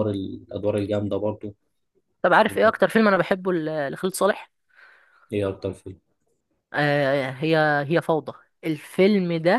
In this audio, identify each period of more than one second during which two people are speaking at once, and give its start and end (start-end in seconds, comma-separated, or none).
none